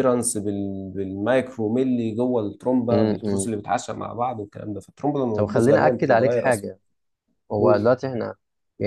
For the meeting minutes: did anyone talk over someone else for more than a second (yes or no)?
yes